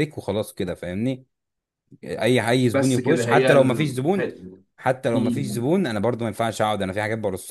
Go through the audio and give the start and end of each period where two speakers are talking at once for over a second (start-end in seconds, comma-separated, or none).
2.7-4.3